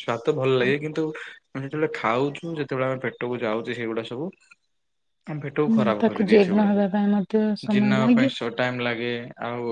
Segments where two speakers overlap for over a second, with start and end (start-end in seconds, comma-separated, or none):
5.7-8.3